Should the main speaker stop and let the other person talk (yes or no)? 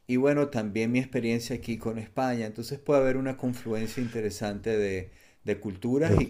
no